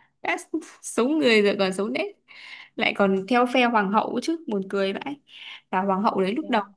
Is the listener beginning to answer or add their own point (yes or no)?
no